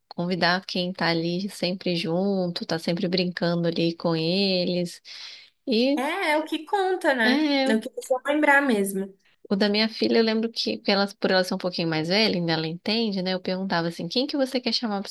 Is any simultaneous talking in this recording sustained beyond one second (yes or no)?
no